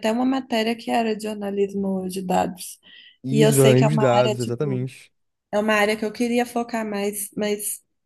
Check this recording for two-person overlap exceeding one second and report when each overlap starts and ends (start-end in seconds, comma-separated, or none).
3.3-4.9